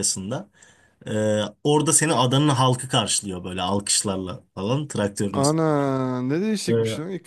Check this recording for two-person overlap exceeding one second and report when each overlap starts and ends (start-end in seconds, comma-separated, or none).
none